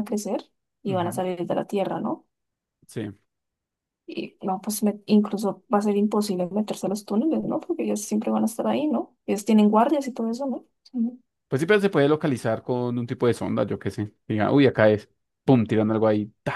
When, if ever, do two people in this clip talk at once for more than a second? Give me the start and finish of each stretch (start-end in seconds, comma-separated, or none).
none